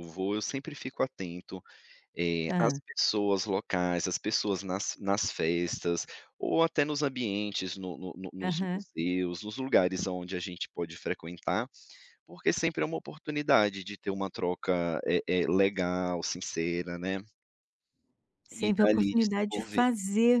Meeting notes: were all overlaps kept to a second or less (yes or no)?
no